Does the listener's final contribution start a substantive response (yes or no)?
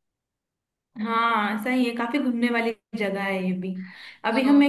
no